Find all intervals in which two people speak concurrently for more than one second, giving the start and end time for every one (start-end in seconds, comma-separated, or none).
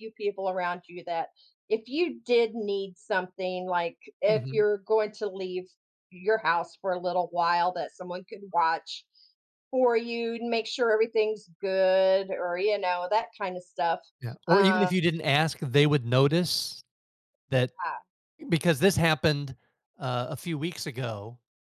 none